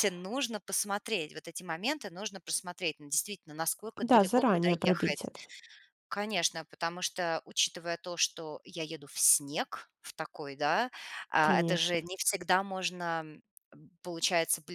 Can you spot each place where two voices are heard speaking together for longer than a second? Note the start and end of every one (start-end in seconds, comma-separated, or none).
4.0-5.3